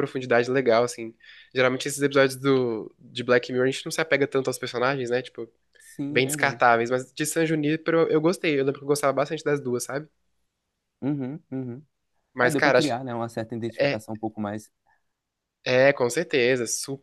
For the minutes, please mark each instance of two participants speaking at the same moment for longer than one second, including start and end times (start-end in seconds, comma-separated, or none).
none